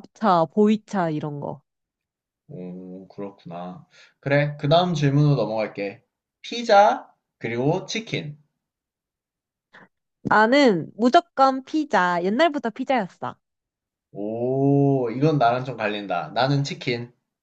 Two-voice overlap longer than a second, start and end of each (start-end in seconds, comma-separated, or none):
none